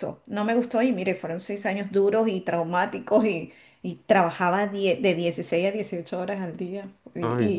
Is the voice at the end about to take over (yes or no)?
no